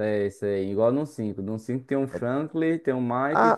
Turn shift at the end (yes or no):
yes